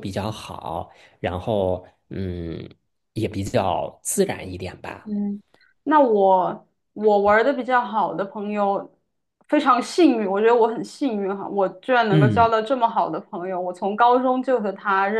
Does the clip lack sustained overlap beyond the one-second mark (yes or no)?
yes